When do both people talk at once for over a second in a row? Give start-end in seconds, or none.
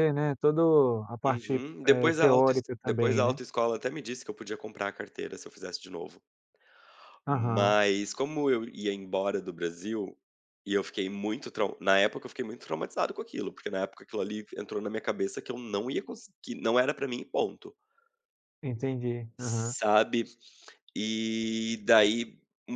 1.3-3.4